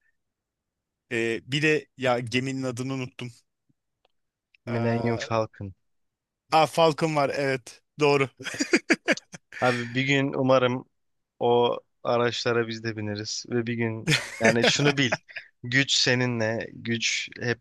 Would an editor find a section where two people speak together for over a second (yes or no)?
no